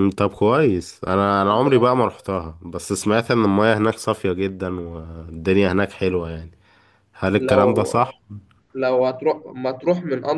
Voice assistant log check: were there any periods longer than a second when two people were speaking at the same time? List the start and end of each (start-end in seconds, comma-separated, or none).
none